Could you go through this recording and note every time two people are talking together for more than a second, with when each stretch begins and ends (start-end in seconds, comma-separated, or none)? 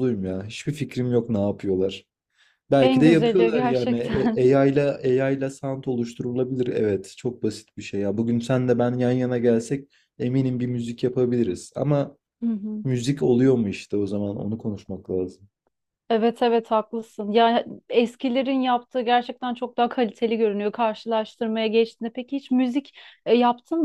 2.8-4.4